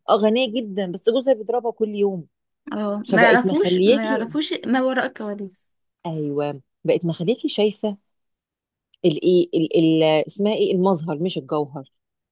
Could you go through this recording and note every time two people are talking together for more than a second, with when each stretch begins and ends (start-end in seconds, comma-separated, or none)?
3.0-4.3